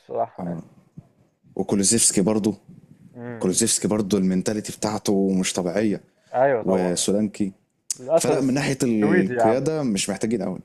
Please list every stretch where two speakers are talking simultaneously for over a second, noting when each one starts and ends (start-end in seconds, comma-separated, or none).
8.2-9.6